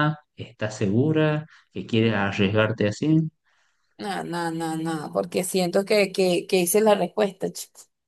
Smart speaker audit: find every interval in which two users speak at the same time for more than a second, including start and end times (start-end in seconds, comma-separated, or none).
none